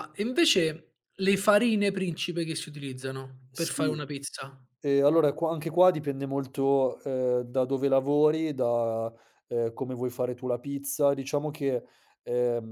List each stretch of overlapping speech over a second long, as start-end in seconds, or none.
none